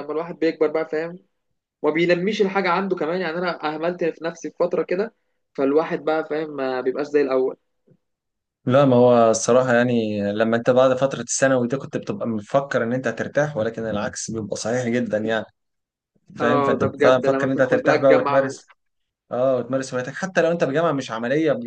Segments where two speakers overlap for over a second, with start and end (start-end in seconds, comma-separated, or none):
16.4-18.5